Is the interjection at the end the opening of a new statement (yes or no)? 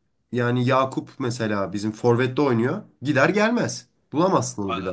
yes